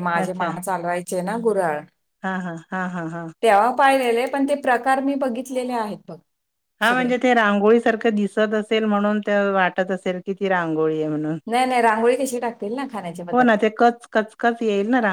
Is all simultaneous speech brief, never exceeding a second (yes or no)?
yes